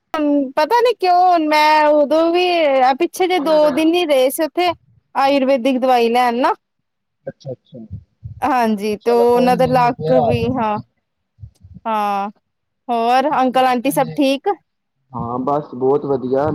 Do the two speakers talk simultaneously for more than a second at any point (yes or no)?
yes